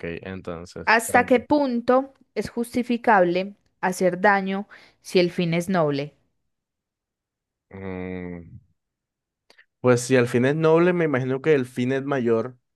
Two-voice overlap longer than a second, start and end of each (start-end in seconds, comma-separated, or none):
none